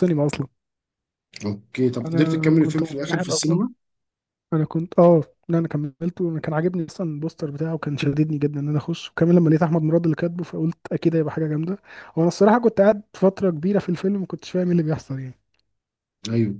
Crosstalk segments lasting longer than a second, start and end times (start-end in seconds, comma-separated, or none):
2.1-3.6